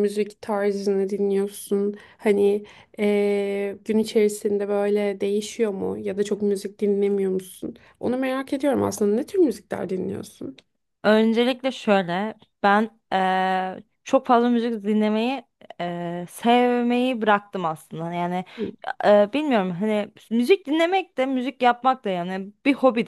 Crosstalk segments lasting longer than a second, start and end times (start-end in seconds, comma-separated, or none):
none